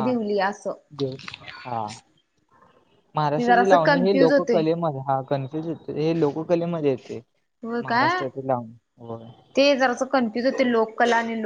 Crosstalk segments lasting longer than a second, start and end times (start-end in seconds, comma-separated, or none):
3.4-4.6